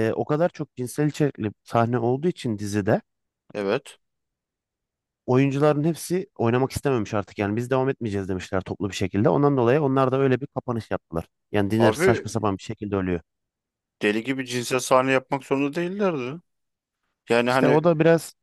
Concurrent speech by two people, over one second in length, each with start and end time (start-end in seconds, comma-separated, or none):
none